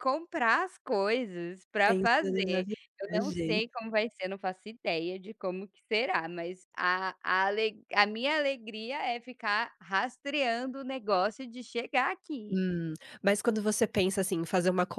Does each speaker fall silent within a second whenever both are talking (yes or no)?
no